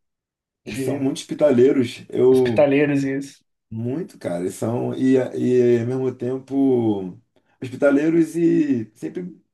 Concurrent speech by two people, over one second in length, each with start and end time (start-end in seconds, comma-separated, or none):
none